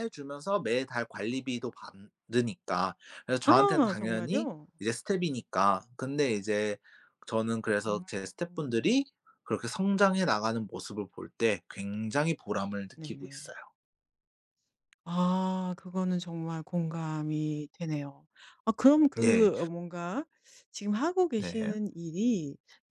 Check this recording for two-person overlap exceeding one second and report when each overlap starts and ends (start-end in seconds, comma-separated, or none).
3.4-4.7